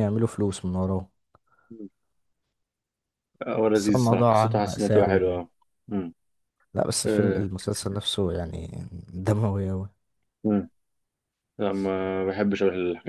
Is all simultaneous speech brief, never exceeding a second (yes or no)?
no